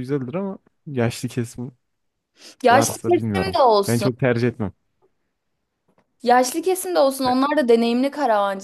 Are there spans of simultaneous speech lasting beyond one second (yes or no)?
yes